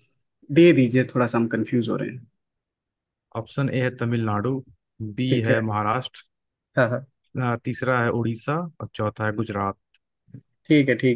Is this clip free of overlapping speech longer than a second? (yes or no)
yes